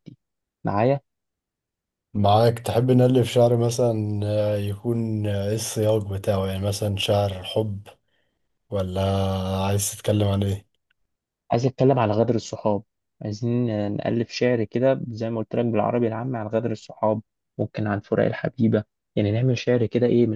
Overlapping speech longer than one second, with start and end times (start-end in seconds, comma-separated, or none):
none